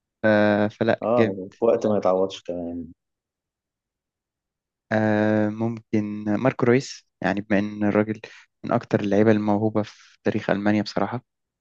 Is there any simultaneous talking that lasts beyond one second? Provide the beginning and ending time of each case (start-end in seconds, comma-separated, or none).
none